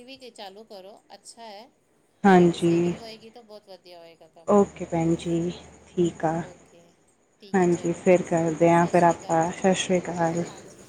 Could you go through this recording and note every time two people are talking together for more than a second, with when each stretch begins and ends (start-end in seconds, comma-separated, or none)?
7.5-9.6